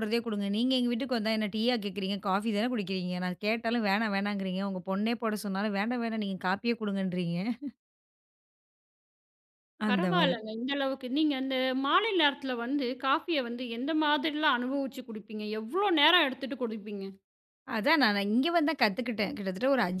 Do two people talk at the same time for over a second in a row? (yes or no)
no